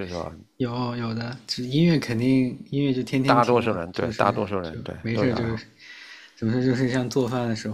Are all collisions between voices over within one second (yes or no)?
no